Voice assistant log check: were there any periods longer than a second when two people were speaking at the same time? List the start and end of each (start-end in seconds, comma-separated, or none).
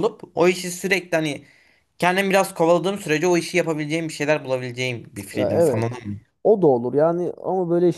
none